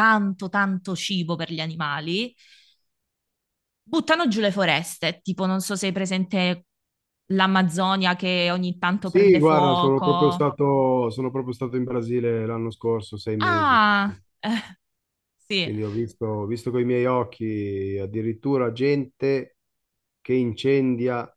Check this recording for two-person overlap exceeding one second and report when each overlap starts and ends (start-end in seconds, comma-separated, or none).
9.0-10.5